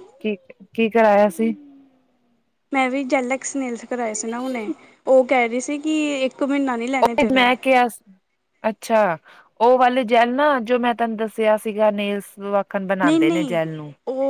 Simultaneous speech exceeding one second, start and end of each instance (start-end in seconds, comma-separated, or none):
none